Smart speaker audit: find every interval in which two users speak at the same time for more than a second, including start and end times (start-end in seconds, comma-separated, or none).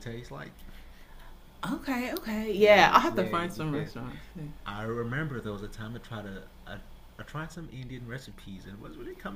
2.6-3.9